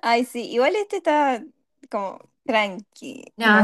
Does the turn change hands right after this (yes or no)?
yes